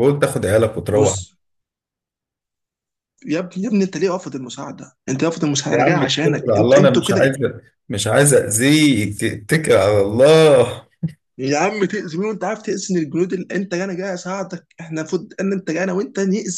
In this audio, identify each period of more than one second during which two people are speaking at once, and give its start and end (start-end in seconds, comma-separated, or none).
5.7-7.3